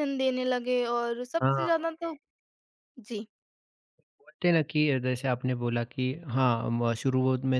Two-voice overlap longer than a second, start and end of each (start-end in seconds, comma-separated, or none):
none